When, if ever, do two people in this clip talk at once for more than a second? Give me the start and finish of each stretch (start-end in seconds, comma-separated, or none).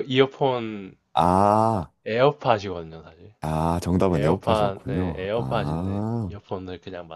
4.1-6.3